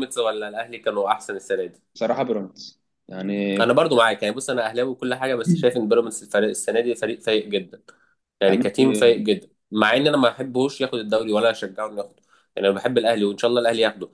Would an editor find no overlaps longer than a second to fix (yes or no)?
yes